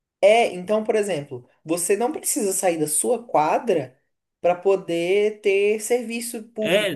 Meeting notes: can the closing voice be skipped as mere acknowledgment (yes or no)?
no